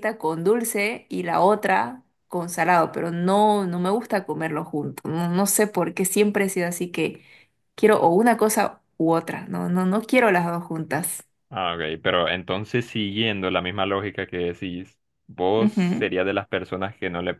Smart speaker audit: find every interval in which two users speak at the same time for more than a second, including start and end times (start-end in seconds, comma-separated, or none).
none